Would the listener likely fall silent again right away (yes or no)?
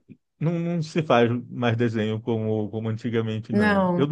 yes